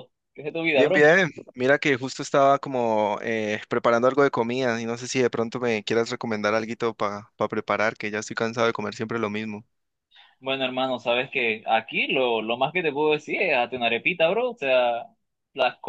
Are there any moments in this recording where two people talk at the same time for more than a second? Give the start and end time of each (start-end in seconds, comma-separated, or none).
none